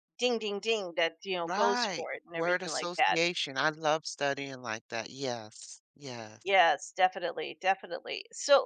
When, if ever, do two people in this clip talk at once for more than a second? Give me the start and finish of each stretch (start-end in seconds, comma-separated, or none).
1.4-3.2